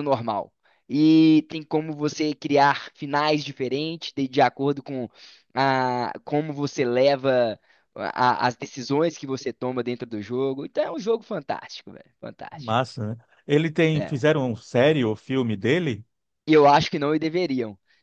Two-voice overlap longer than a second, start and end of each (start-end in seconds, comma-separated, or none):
none